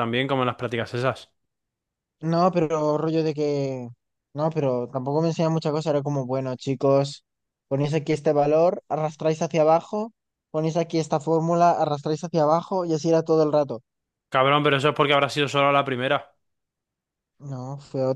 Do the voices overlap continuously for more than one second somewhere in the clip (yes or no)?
no